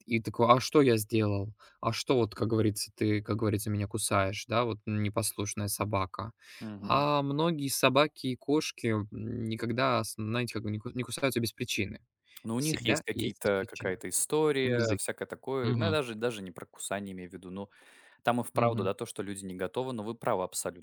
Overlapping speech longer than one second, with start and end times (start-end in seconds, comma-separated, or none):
12.6-14.0